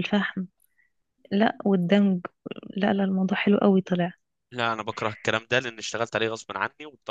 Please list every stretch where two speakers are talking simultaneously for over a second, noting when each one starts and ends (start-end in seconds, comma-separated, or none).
none